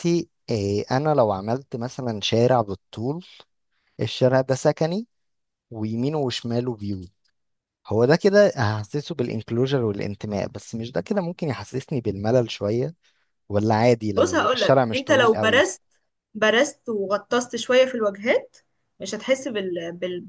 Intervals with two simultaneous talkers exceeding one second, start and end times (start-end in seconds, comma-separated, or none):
14.2-15.7